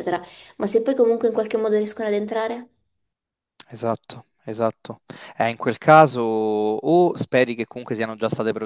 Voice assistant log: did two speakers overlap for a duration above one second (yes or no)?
no